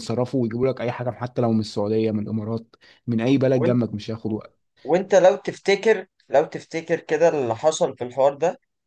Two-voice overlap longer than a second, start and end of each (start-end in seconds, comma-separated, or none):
none